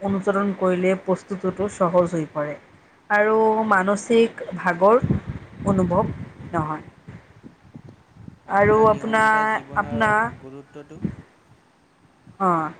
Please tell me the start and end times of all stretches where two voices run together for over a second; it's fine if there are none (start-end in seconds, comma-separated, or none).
8.6-10.3